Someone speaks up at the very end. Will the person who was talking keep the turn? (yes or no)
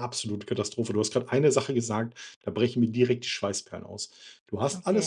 yes